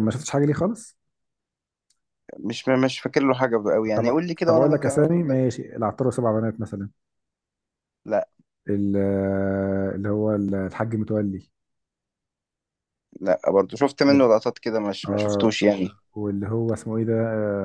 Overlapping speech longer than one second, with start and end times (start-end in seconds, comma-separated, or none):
4.0-5.4